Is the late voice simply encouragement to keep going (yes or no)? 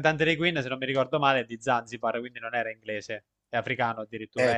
no